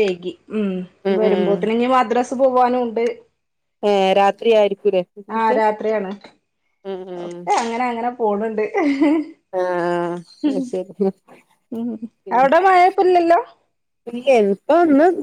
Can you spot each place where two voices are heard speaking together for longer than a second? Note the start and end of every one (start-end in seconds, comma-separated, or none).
none